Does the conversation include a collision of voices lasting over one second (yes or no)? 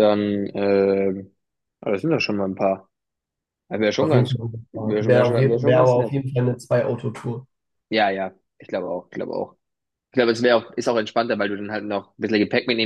yes